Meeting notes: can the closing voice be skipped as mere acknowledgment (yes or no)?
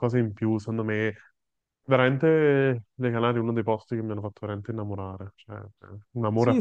no